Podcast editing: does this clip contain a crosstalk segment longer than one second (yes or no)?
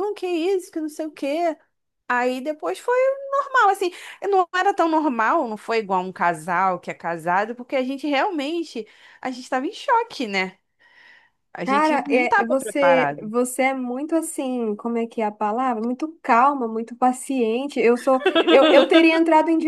yes